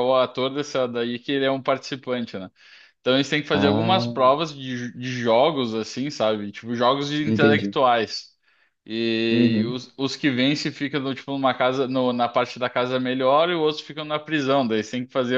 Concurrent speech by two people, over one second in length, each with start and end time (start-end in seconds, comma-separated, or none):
none